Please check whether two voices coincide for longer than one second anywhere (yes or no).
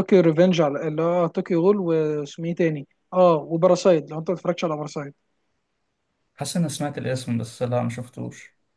no